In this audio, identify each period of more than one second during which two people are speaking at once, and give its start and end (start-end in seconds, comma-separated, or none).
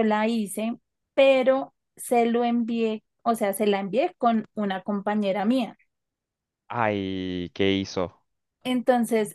none